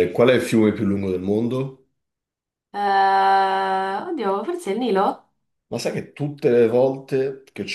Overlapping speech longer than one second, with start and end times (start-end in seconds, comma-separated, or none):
none